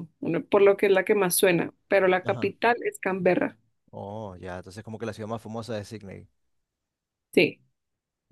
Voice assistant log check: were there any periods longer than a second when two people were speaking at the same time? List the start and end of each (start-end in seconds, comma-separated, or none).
none